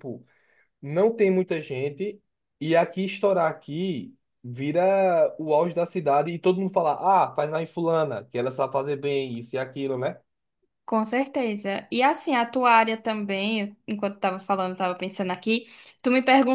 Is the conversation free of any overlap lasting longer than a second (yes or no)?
yes